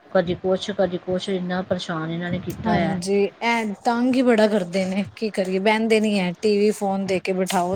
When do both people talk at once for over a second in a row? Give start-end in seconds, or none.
none